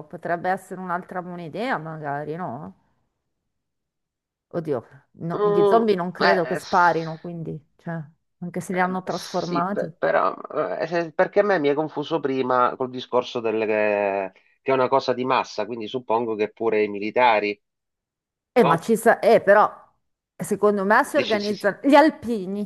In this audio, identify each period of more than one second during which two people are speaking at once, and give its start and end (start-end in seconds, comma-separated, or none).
5.3-7.1, 8.7-9.9